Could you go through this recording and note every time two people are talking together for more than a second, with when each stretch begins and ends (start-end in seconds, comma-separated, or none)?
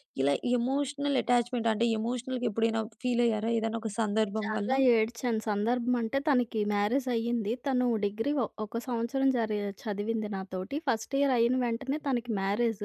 none